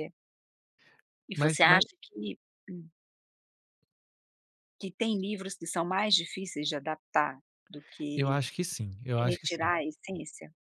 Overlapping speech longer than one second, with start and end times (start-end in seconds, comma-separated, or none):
none